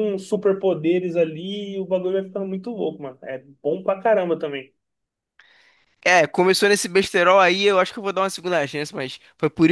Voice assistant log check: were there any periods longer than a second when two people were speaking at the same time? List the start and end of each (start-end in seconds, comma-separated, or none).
none